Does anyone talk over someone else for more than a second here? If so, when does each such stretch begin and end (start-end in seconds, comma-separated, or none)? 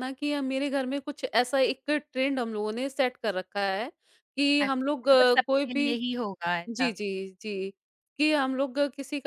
4.6-5.9